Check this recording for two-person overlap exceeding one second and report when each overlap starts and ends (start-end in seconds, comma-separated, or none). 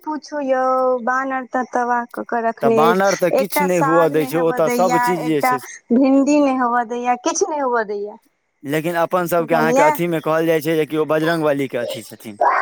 2.6-5.5